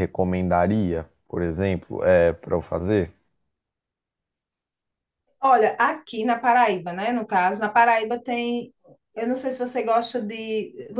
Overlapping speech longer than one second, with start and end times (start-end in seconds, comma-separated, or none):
none